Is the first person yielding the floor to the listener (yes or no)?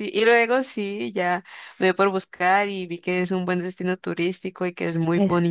yes